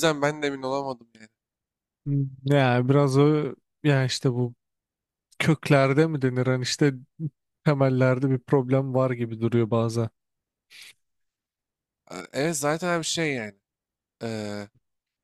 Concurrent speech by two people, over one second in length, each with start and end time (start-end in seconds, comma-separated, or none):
none